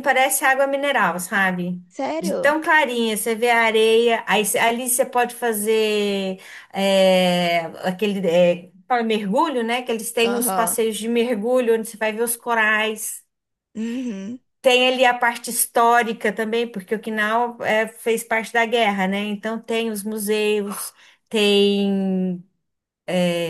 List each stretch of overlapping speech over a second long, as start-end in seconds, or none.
none